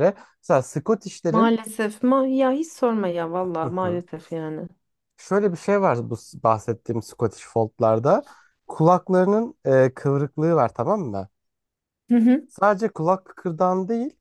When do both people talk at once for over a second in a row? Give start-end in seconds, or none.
none